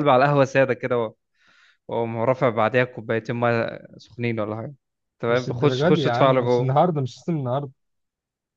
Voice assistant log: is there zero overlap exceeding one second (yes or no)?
no